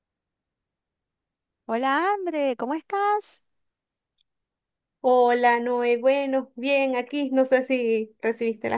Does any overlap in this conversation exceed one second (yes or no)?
no